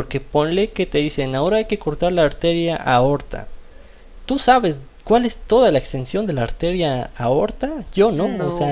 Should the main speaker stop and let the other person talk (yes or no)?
no